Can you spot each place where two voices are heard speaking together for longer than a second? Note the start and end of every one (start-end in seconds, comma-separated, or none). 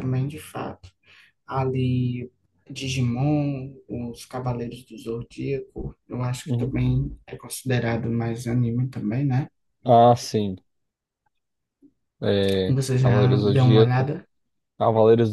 12.7-14.1